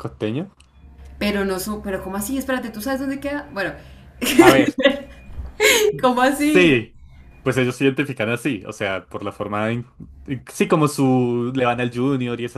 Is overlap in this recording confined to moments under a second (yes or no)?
yes